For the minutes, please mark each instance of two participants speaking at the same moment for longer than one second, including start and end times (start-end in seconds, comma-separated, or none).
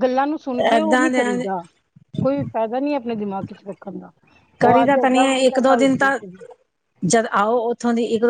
4.6-6.2